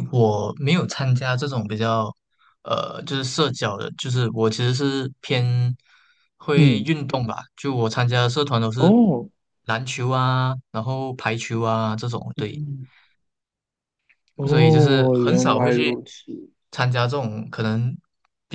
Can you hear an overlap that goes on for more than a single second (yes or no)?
yes